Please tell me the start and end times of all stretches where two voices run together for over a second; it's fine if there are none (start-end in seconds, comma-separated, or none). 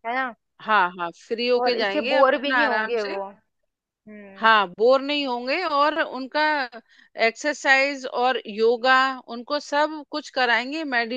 1.6-3.2